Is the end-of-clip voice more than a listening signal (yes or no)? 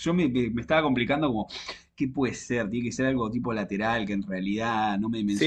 yes